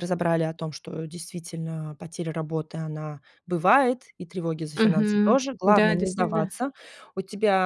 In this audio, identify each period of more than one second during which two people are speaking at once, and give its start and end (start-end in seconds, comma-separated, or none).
4.8-6.5